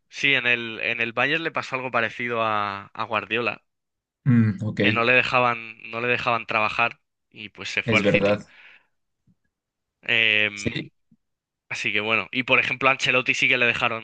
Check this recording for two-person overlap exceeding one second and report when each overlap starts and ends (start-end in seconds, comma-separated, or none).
none